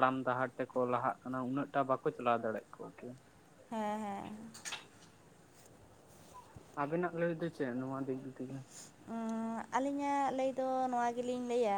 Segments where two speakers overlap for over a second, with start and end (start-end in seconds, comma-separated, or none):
none